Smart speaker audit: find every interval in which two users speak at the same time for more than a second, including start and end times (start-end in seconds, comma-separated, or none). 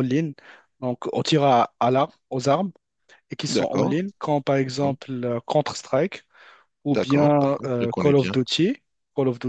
6.9-8.4